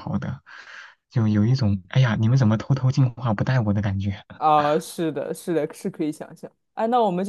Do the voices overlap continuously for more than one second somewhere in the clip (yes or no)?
no